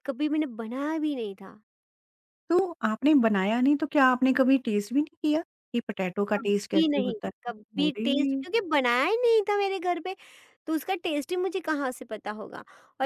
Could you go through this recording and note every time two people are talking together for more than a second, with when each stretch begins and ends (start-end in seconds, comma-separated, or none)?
6.4-8.4